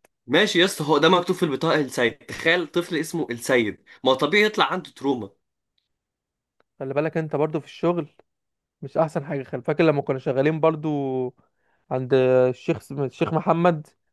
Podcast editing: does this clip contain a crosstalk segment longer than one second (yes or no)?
no